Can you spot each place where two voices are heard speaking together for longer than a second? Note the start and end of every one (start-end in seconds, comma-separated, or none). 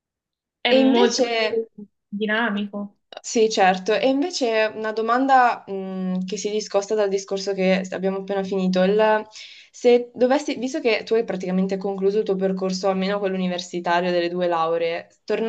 none